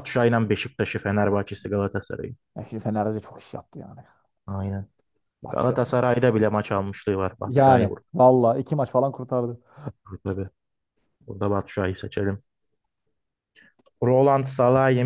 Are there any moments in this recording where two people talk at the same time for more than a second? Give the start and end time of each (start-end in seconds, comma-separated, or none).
none